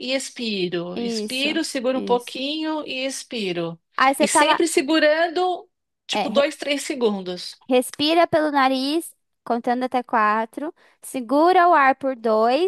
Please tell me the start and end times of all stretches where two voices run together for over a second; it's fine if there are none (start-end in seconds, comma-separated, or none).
0.9-2.4